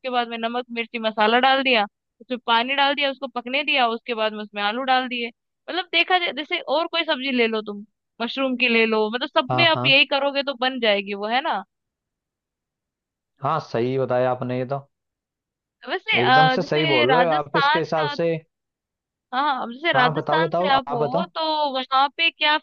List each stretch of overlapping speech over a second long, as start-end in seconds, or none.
16.2-17.8, 19.9-21.3